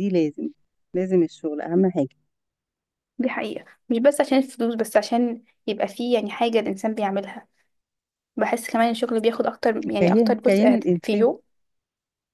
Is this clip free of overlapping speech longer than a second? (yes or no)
no